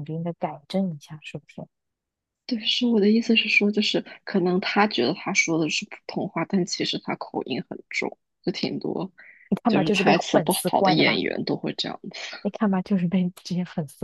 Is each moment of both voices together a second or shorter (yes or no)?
no